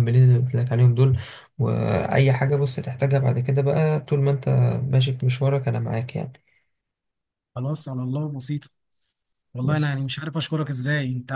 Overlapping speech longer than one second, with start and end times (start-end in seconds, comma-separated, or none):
none